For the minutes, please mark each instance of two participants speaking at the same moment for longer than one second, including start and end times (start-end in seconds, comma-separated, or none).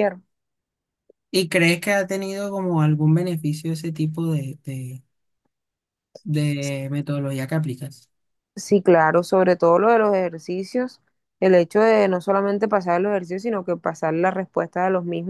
none